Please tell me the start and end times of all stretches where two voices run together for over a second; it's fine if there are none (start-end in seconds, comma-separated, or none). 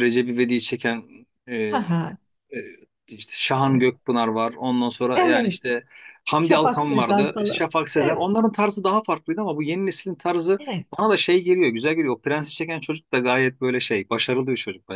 6.4-8.3